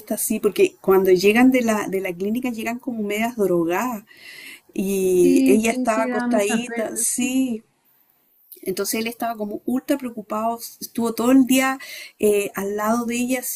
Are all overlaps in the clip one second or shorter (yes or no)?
no